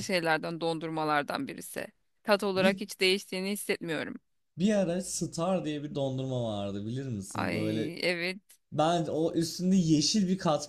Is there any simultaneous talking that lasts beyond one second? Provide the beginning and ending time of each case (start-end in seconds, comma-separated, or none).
none